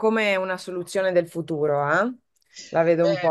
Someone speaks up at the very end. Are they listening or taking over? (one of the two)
taking over